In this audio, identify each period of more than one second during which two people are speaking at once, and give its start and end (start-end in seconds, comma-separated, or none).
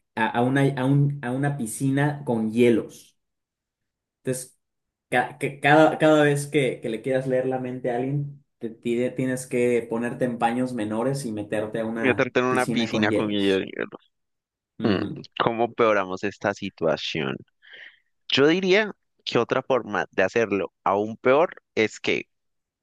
12.0-13.6